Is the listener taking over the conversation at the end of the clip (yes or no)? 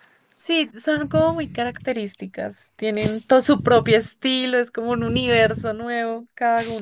yes